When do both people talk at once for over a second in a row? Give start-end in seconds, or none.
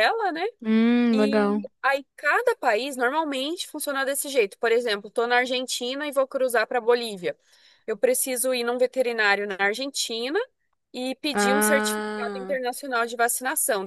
11.3-12.6